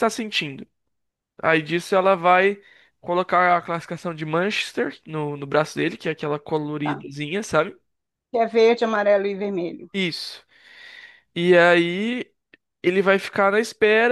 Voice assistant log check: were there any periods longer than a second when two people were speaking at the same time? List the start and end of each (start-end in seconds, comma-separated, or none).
none